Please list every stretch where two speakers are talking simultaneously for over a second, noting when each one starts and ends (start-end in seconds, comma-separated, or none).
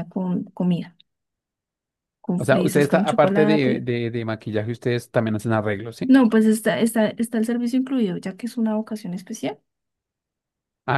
2.4-3.8